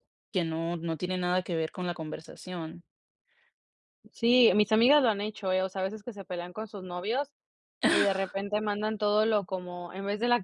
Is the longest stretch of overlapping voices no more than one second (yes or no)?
yes